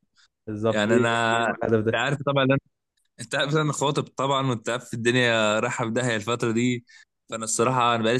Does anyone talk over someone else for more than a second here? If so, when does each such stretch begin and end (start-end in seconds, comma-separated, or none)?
0.7-2.0